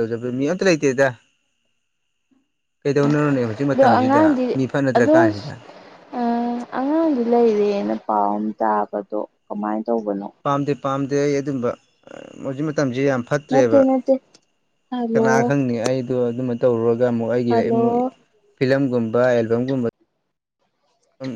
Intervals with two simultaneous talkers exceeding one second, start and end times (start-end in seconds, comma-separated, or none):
none